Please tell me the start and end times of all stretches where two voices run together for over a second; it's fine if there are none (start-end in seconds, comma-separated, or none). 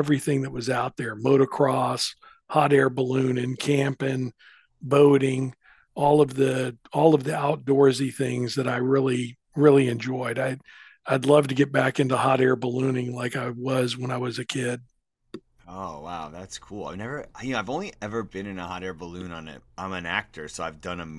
none